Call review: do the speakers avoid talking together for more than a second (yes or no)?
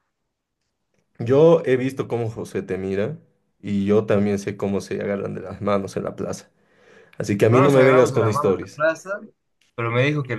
no